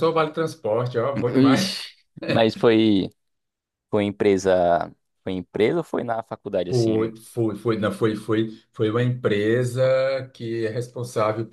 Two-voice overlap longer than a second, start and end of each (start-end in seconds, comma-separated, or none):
none